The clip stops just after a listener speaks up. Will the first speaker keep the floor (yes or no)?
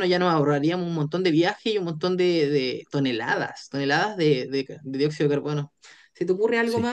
yes